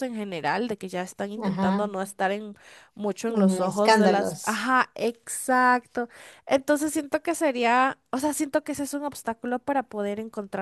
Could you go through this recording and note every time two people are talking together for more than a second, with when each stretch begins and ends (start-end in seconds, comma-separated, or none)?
3.3-4.7